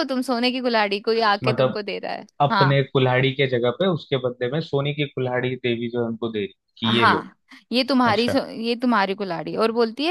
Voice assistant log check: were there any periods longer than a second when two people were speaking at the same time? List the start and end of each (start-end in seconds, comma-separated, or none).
none